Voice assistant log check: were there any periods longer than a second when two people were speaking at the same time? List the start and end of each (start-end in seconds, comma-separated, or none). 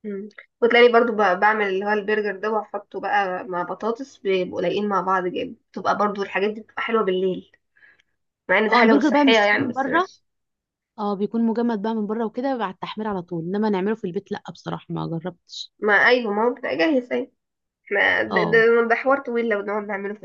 8.7-10.1